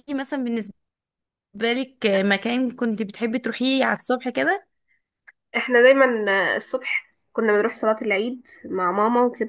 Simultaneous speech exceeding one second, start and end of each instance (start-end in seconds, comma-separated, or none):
none